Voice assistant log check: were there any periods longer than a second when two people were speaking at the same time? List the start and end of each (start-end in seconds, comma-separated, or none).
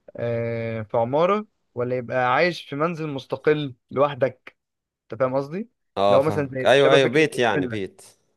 6.1-7.8